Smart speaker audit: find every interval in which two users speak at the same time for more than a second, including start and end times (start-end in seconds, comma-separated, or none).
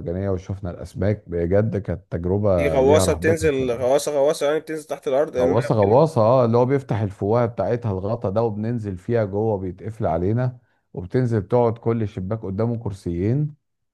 2.6-3.9